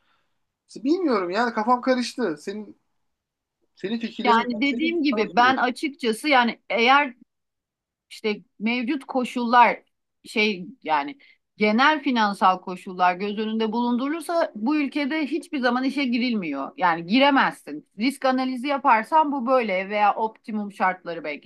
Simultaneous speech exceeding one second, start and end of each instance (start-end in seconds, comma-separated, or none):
4.2-5.6